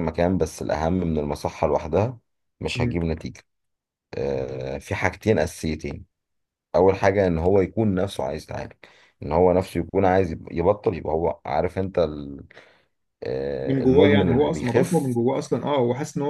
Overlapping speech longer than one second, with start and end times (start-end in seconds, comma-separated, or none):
13.7-15.2